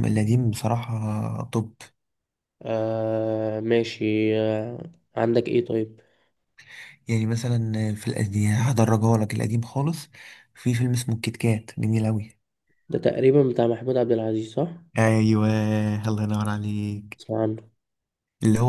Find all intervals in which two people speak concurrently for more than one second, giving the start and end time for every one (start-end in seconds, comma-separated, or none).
none